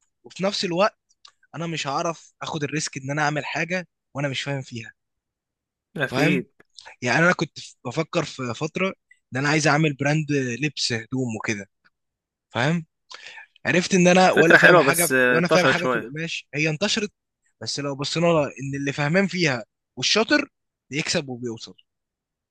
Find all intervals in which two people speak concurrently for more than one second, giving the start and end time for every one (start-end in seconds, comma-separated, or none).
14.3-16.1